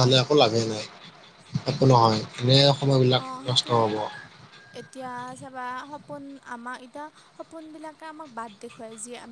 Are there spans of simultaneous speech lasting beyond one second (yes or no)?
no